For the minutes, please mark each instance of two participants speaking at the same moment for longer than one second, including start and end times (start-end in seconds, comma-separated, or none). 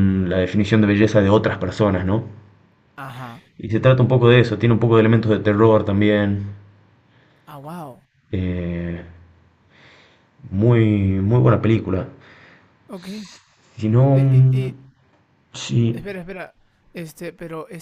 none